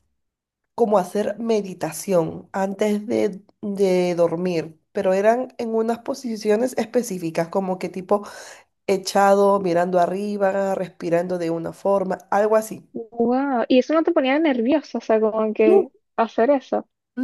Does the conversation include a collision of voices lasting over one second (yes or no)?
no